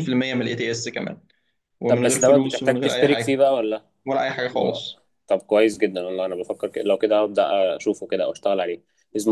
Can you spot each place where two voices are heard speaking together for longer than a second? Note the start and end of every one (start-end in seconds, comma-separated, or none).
1.9-3.4